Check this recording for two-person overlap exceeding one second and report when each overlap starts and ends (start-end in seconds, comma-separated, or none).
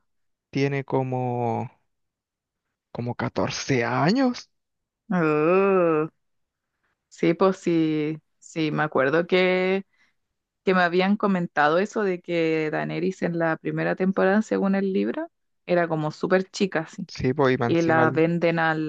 none